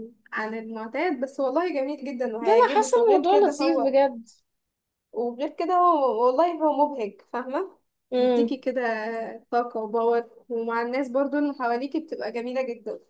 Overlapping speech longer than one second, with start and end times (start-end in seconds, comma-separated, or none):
2.4-4.0